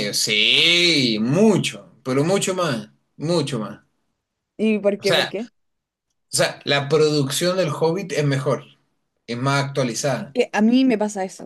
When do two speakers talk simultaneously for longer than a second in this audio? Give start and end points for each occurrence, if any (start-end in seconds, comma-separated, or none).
none